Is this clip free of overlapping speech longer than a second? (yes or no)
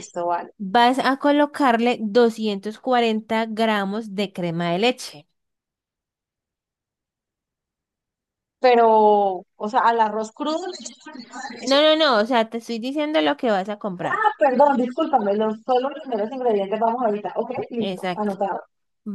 yes